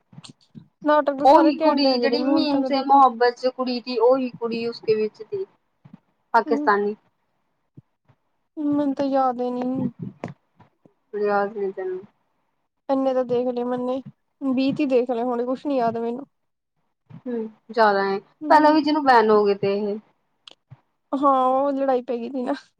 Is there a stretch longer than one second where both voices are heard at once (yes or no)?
yes